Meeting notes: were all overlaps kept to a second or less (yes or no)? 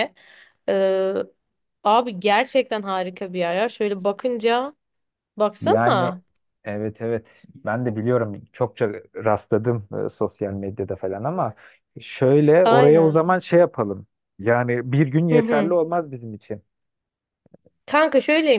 yes